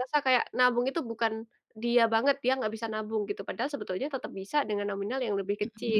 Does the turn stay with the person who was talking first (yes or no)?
no